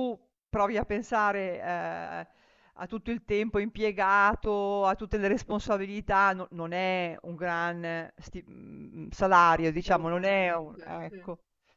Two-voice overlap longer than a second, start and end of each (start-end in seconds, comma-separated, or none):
9.5-11.2